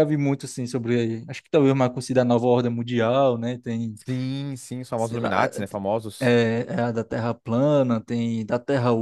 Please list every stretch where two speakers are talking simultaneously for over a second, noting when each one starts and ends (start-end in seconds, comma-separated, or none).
none